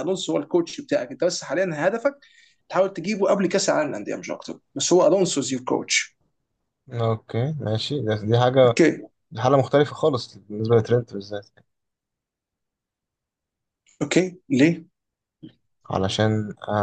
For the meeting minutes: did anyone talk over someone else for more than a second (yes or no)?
no